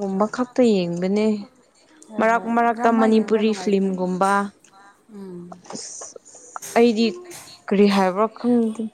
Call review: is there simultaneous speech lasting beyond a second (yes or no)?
yes